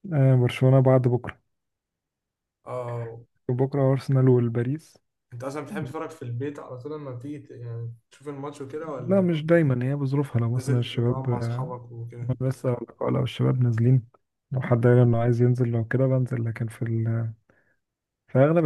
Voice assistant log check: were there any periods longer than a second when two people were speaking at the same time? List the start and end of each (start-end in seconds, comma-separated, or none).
10.5-11.7